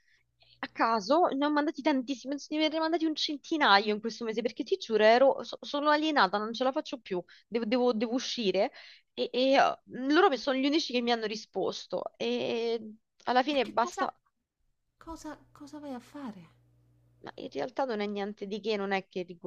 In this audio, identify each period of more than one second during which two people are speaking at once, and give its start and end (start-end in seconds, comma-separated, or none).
none